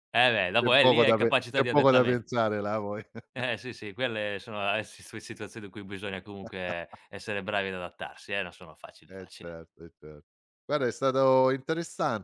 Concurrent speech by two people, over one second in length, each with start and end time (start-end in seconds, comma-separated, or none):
0.6-2.2